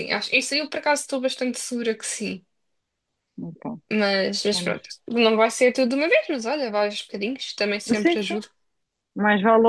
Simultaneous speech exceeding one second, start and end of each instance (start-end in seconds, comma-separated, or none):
none